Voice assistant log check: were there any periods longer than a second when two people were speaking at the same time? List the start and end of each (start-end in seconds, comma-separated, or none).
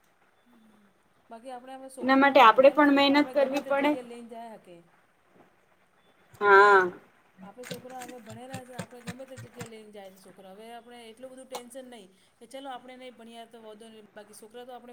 2.0-3.9